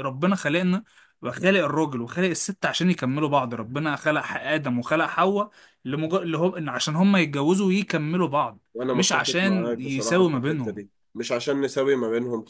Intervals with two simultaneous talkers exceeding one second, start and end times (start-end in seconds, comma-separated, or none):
8.7-10.8